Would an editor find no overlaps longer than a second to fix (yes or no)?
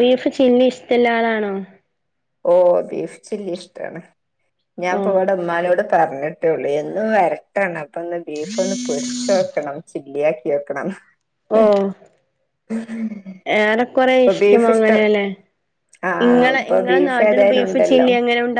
no